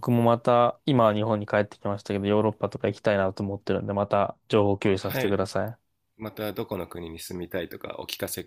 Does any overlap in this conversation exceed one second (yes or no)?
no